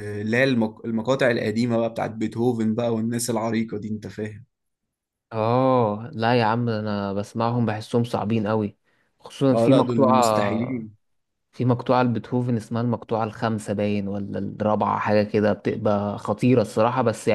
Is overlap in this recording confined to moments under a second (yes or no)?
no